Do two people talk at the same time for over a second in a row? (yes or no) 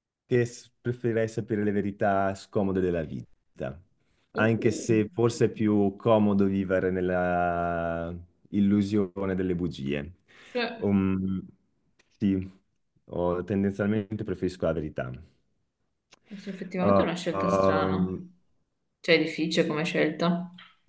yes